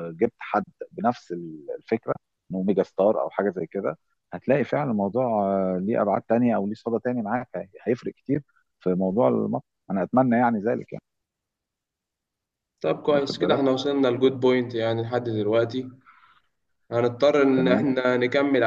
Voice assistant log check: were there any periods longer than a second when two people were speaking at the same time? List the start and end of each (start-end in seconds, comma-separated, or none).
none